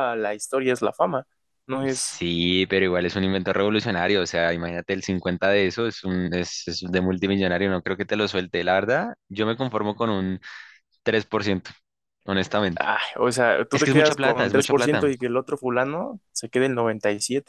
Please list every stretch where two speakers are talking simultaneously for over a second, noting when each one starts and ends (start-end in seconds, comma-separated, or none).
13.7-15.1